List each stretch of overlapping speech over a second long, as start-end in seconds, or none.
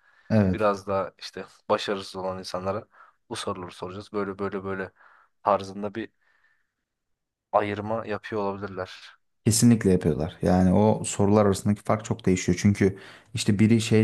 none